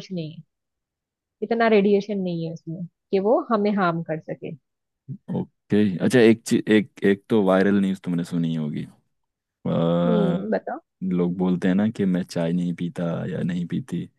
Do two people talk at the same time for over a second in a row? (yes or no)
no